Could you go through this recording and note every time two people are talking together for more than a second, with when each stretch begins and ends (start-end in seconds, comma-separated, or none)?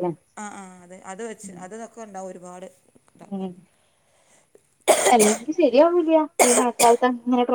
none